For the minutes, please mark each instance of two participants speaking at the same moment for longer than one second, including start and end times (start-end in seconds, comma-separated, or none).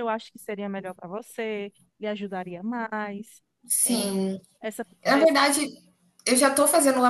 none